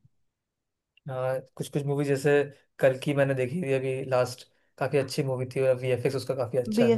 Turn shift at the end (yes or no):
yes